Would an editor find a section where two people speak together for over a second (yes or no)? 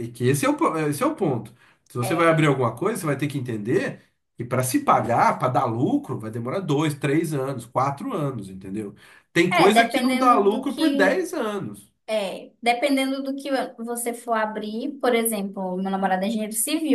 yes